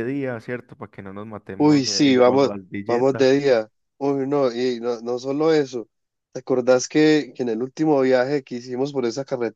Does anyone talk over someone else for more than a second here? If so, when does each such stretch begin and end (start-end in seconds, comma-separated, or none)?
1.6-3.3